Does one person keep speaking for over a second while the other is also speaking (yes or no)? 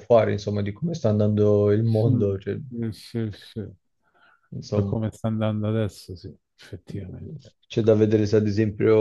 no